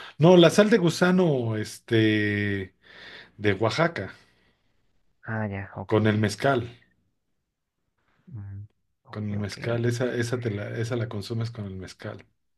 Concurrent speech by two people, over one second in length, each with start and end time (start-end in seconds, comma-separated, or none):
none